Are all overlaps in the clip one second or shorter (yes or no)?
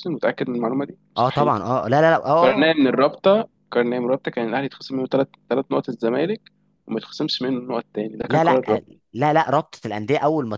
yes